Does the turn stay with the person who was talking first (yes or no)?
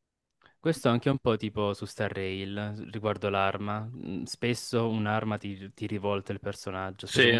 yes